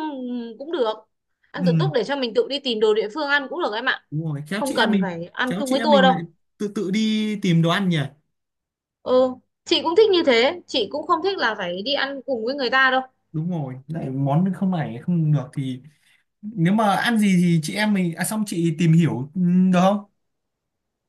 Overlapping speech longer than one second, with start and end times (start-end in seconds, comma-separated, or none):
4.6-6.2